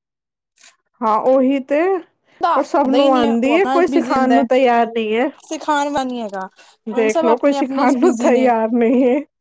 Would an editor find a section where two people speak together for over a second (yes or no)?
yes